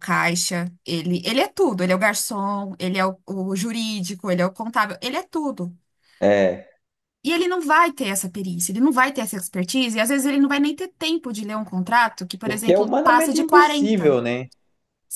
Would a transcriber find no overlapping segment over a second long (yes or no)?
no